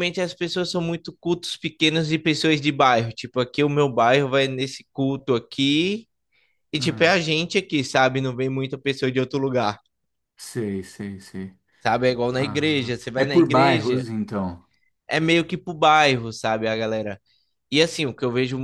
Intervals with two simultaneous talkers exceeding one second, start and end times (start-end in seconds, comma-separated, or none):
12.3-14.1